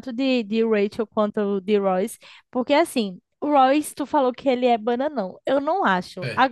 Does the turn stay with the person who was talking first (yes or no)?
yes